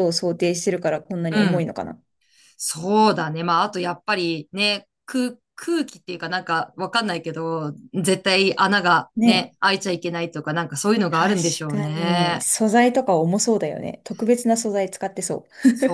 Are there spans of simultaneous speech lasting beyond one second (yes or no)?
yes